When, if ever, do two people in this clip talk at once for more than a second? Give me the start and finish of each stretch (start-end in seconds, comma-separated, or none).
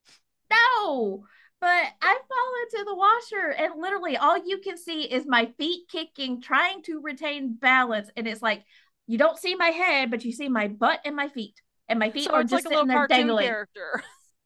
12.2-13.6